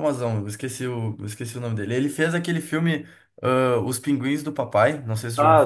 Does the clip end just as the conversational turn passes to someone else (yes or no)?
yes